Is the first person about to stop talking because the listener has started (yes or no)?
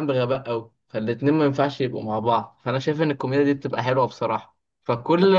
no